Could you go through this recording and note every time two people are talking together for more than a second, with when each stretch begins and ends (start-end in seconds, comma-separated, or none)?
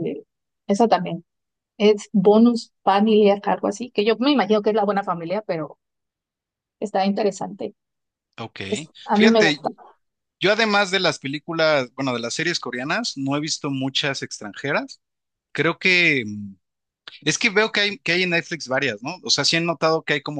none